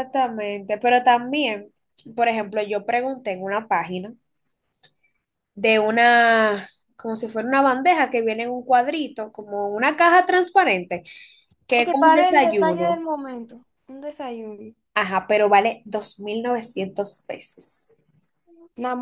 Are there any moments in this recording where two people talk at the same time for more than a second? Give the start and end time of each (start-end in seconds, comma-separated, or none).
11.8-13.0